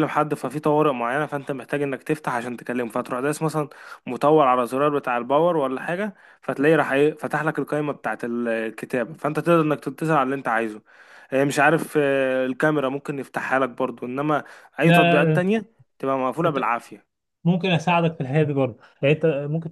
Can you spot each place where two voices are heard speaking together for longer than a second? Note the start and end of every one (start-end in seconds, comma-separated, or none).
none